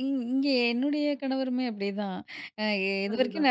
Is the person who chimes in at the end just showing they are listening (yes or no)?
yes